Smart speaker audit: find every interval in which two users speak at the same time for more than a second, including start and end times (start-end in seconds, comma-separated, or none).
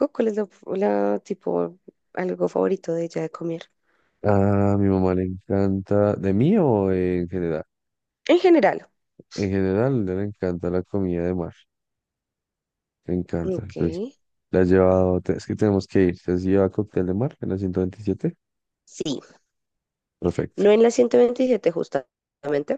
none